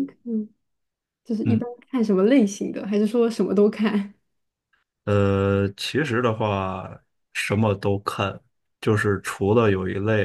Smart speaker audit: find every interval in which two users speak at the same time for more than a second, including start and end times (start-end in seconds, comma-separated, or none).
none